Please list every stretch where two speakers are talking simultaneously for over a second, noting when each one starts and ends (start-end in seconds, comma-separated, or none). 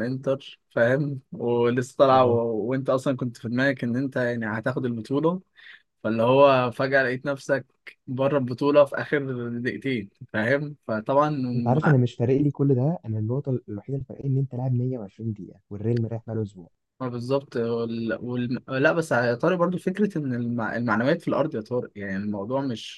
none